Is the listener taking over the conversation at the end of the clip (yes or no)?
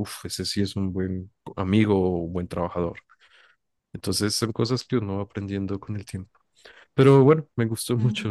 no